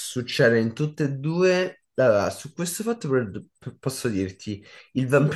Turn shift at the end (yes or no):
no